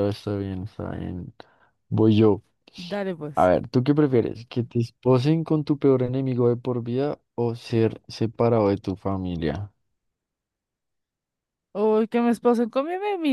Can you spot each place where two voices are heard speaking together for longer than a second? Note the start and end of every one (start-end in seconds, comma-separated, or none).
none